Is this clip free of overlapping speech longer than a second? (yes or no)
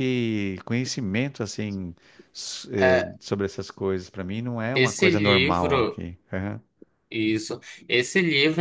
no